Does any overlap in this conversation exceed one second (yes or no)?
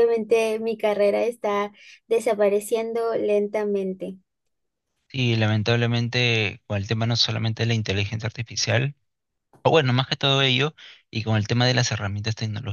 no